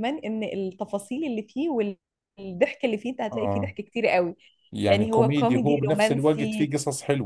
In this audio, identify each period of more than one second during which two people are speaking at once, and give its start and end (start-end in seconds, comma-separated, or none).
4.9-6.7